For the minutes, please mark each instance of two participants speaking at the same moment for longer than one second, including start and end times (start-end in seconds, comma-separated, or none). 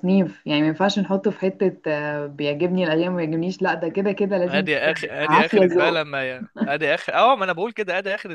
4.5-6.0